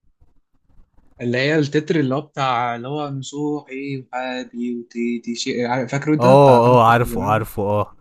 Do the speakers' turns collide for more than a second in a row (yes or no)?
yes